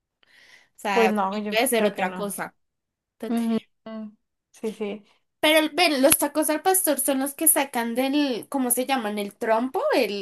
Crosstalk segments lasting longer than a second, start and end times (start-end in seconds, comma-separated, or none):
0.9-2.4